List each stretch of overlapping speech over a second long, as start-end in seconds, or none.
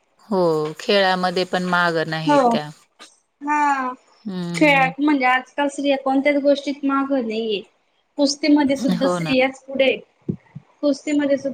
none